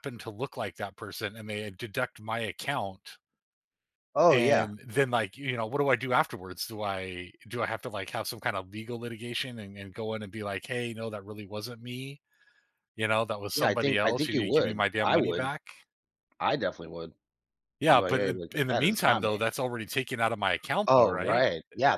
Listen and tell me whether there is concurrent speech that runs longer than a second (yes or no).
yes